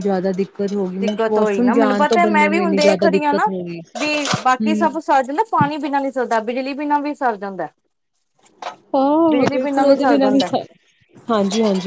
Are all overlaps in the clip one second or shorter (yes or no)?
no